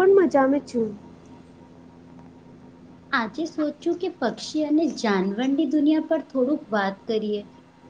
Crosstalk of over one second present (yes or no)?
yes